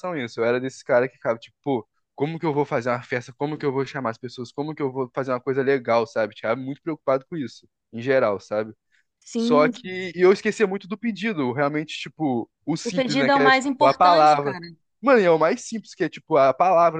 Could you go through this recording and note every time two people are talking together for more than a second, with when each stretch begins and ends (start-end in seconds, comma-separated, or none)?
12.8-14.6